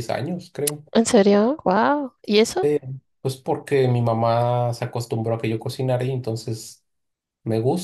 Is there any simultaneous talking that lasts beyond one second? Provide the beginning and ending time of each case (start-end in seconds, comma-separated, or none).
none